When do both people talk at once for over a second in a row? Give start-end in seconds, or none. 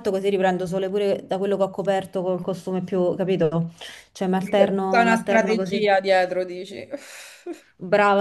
4.4-5.8